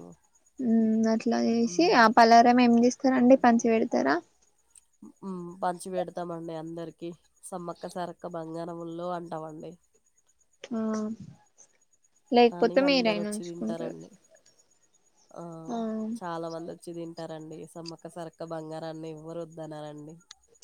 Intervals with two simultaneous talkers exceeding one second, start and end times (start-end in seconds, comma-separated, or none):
12.6-14.0